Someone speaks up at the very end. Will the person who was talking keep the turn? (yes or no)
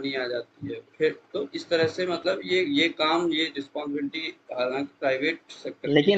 no